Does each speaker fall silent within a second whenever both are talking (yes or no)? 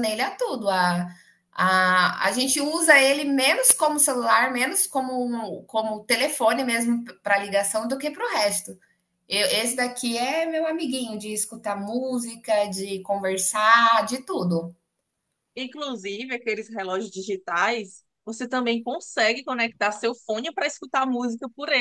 yes